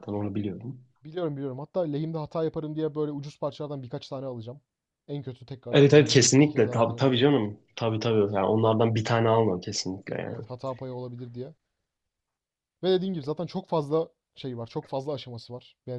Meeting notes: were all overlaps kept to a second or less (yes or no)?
no